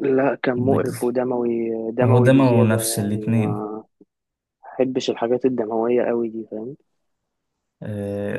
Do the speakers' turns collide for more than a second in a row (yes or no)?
yes